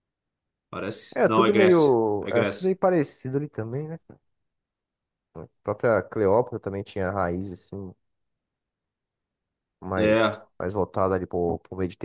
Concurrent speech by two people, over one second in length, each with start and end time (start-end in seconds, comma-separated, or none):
1.1-2.7